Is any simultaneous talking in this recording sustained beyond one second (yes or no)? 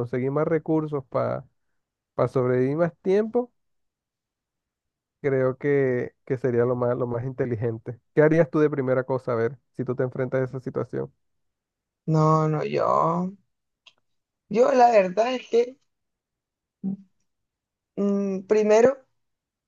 no